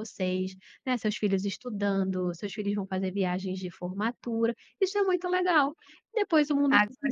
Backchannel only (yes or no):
no